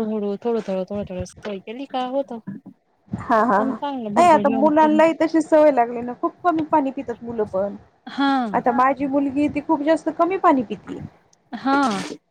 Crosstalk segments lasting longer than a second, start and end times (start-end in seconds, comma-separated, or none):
3.6-5.0